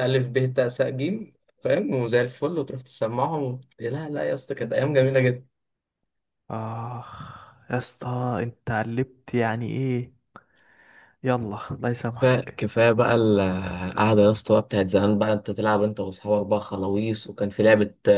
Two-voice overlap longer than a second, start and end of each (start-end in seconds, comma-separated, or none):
none